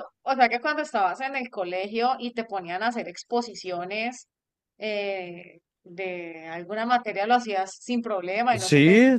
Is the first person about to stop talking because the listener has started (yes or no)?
yes